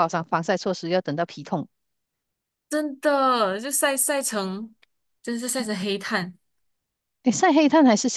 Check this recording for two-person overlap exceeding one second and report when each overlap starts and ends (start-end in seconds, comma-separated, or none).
none